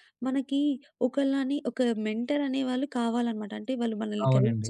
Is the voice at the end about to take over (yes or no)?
yes